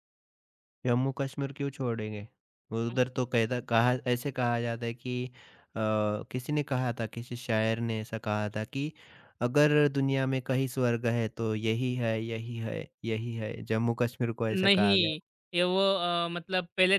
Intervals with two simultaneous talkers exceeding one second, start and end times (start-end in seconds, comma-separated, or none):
none